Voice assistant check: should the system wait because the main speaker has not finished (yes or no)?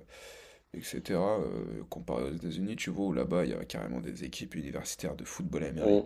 yes